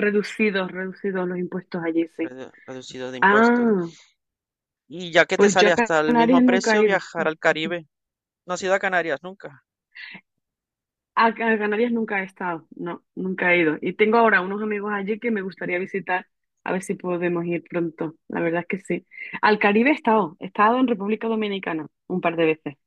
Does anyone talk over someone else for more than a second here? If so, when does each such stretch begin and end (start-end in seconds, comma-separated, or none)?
5.4-7.0